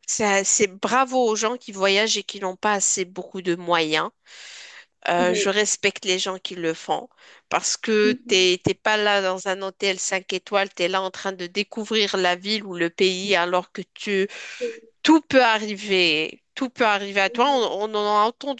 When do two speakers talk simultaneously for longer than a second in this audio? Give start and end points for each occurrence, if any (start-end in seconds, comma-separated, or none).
none